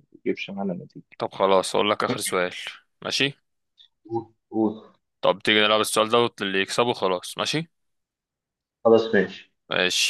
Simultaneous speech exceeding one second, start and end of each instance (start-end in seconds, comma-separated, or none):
none